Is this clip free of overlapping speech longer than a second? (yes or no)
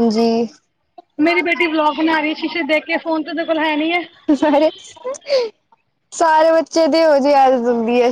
yes